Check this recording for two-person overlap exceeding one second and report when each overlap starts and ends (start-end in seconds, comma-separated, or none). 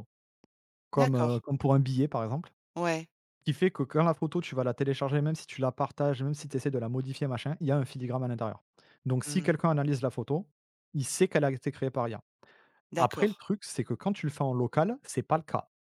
none